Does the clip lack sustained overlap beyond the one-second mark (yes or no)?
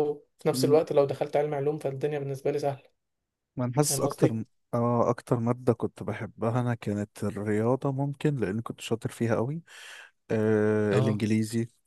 yes